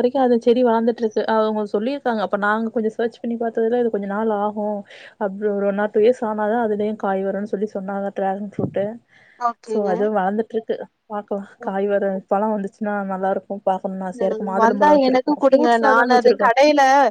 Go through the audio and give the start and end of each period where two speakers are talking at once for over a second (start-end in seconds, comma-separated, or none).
14.6-16.5